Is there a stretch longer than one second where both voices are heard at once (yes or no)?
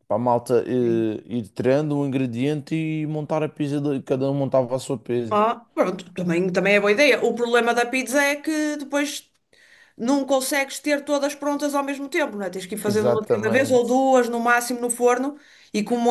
yes